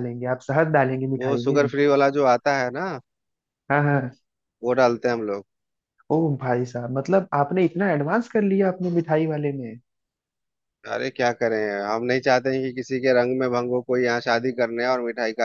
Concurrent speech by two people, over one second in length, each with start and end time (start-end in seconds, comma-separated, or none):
none